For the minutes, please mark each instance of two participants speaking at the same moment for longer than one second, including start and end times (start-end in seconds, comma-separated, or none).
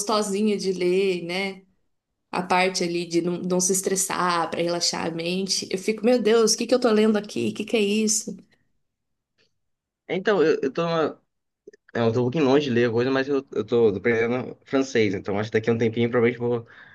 none